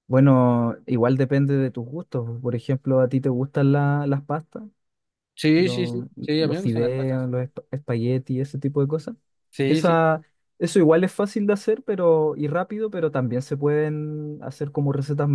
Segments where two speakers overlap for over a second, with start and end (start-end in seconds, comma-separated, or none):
5.6-7.3